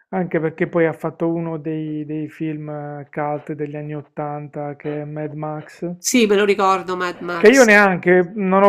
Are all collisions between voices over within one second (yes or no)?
yes